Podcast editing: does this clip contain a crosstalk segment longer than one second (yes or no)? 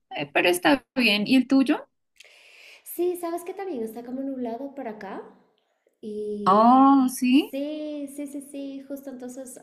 no